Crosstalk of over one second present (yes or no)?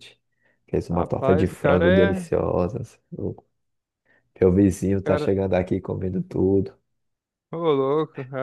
yes